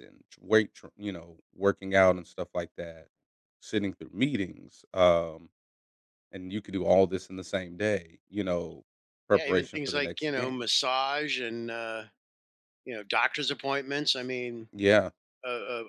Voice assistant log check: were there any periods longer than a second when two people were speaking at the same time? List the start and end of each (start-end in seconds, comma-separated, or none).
9.3-10.6